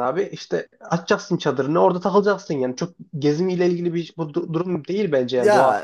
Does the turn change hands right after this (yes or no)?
yes